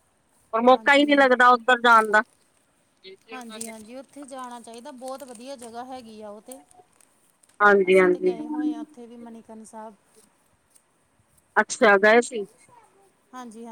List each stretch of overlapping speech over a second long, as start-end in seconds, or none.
none